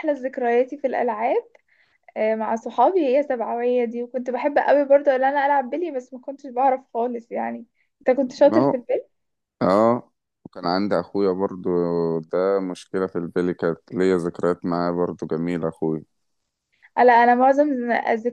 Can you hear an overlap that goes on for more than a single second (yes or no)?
no